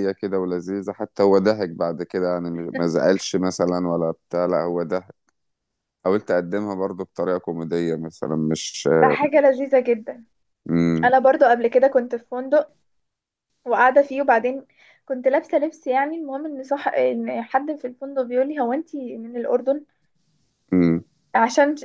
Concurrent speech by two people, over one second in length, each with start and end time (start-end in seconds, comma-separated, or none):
none